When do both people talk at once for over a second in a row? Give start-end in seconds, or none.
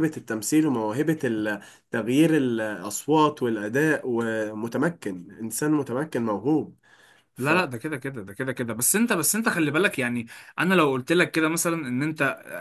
none